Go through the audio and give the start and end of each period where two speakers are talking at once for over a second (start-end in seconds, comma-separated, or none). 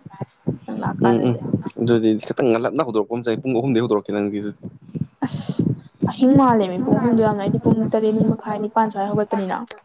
none